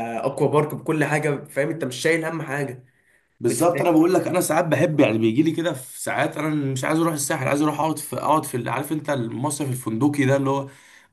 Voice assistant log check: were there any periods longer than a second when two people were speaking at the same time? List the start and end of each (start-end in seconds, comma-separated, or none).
none